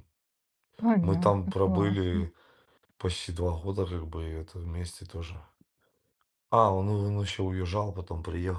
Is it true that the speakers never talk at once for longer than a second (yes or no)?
no